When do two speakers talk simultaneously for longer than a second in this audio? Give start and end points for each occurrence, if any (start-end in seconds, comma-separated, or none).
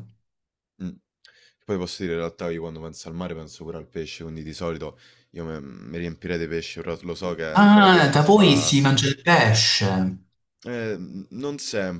7.5-8.8